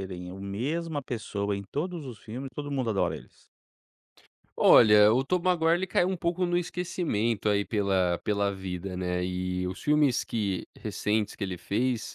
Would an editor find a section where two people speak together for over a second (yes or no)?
no